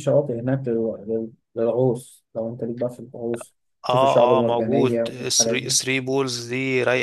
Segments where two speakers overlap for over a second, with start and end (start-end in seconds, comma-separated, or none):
3.9-5.8